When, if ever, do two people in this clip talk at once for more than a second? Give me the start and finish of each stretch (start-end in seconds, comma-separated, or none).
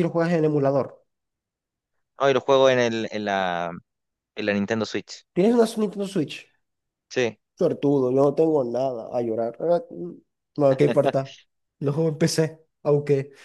none